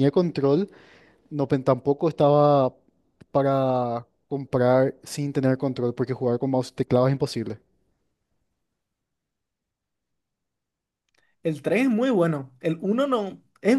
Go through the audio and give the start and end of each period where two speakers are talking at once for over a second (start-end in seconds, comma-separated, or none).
none